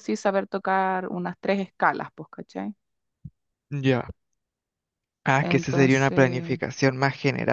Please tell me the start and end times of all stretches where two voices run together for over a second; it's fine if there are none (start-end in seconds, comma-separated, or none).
5.4-6.6